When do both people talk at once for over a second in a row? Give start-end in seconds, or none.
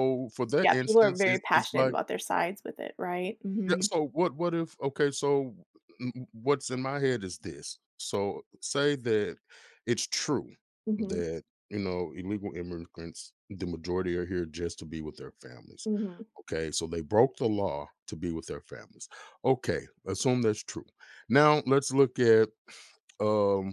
0.6-1.9